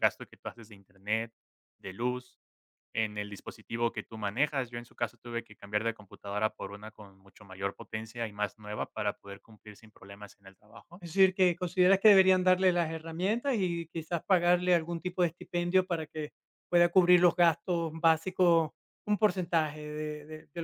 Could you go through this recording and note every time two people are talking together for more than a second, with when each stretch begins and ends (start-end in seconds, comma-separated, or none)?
none